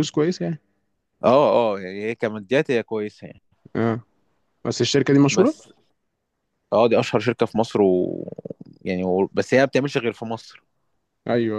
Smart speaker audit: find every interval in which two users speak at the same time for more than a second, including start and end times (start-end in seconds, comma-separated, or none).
none